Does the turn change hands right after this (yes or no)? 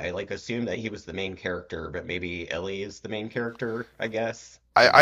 yes